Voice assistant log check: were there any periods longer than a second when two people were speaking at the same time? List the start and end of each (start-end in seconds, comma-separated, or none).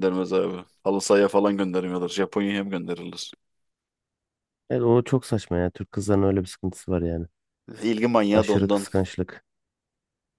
none